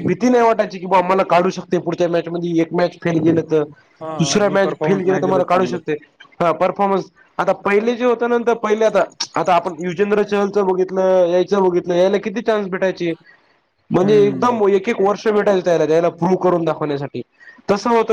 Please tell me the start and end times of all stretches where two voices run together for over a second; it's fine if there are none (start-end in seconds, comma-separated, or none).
4.2-5.8